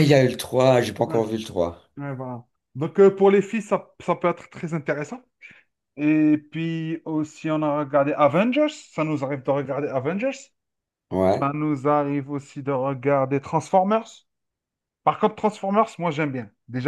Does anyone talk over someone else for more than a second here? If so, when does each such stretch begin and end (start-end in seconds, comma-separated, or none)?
none